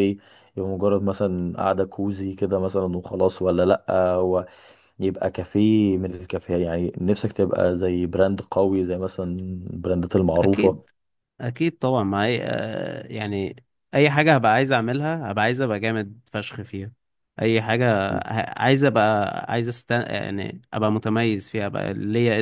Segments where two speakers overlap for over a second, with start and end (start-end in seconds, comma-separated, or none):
none